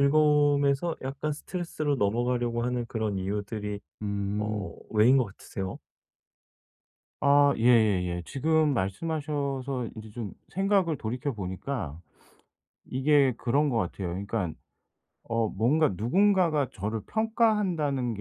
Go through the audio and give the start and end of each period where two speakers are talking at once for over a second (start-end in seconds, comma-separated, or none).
none